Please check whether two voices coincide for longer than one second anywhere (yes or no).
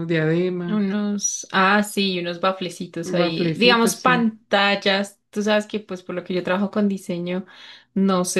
yes